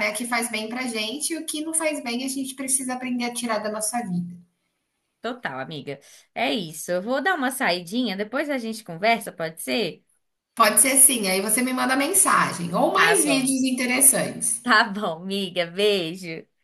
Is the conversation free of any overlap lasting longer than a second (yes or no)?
yes